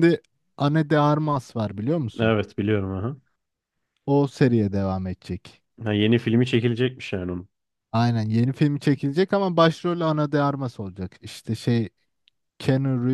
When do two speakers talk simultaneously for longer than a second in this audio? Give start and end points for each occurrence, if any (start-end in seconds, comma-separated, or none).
none